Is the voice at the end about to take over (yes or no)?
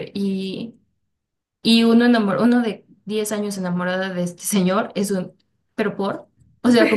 no